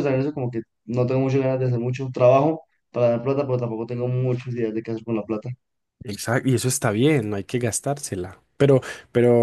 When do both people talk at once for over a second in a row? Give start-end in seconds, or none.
none